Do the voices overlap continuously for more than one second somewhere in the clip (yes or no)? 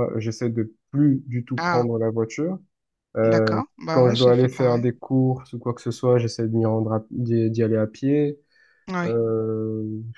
yes